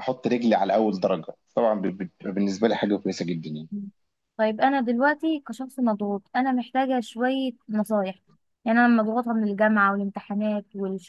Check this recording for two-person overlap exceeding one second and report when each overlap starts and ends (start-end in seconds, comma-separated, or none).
none